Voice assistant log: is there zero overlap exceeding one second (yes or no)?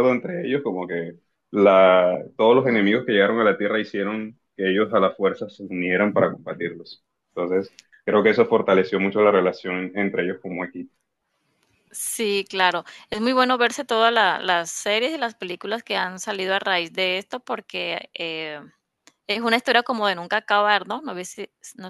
yes